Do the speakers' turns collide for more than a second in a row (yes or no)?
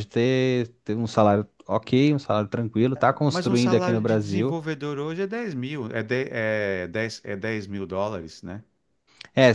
yes